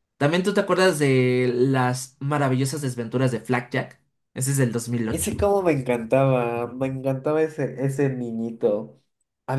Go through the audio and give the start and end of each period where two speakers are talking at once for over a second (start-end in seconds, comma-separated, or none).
none